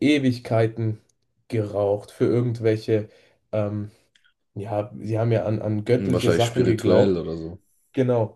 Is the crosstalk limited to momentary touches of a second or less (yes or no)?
no